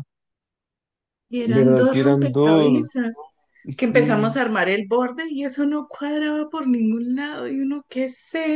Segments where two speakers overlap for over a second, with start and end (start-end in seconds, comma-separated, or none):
1.4-3.0